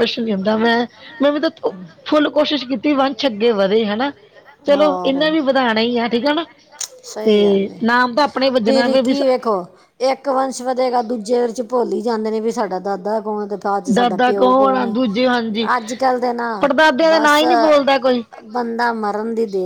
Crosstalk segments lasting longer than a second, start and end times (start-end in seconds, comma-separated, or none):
13.9-15.7